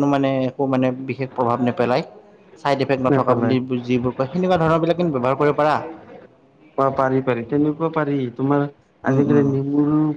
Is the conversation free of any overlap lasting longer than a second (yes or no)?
yes